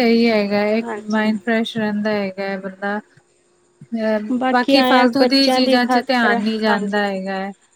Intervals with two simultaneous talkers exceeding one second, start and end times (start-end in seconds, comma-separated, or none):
4.8-7.0